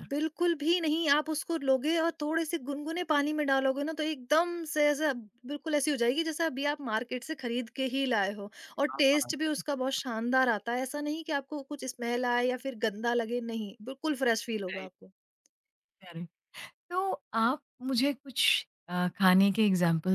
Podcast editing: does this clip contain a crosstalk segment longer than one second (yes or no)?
no